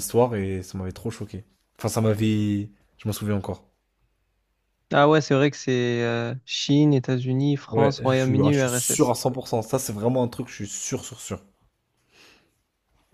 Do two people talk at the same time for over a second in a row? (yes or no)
yes